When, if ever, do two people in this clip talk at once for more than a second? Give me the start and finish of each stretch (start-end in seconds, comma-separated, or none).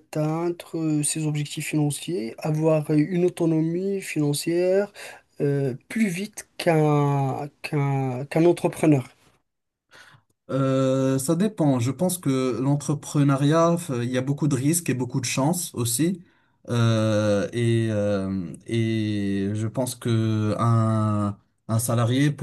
none